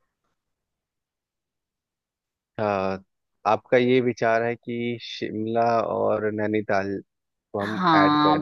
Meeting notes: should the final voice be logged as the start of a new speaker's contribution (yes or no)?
yes